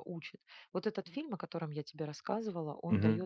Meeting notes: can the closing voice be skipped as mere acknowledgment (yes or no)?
yes